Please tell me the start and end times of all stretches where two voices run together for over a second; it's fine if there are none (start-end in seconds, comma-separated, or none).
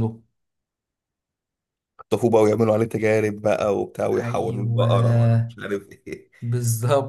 4.2-5.5